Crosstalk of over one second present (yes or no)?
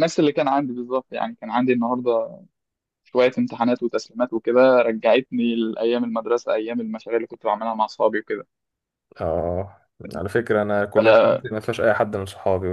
no